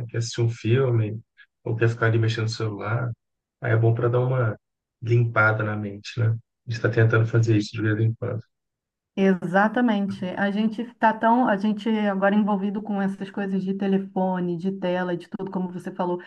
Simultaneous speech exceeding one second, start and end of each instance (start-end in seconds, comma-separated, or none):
none